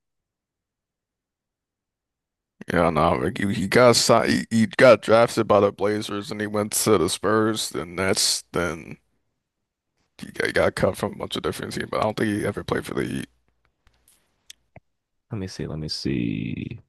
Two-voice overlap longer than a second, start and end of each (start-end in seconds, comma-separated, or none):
none